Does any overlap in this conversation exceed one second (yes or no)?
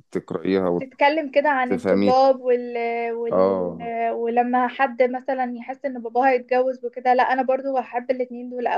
no